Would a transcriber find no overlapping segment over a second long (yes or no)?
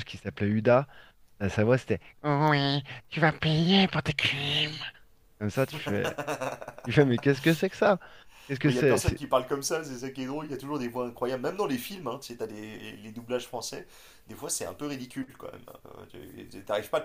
yes